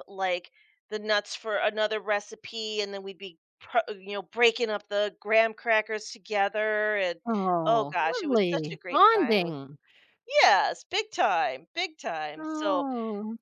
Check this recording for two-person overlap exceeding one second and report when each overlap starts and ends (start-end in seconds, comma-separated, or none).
7.7-9.5